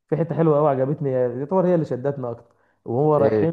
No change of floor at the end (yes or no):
yes